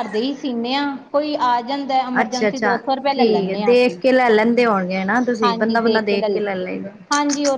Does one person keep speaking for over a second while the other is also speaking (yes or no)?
yes